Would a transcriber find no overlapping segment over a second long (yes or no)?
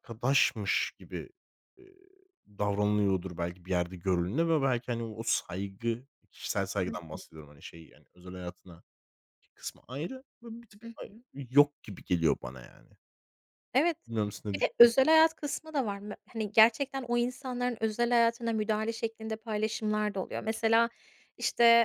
yes